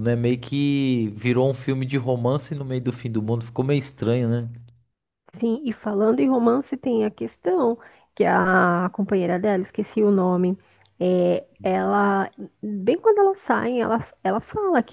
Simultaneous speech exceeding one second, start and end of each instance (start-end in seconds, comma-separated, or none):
none